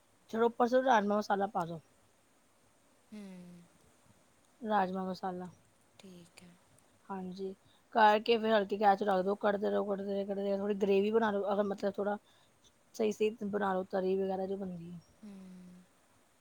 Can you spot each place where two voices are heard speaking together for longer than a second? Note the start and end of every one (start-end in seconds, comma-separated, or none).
none